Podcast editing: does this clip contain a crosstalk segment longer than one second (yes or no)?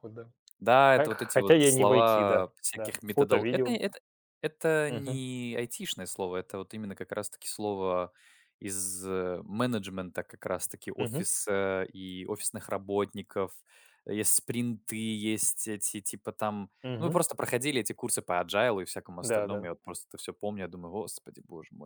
yes